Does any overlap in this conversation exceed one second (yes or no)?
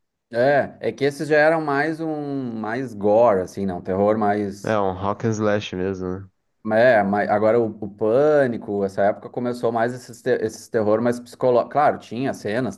no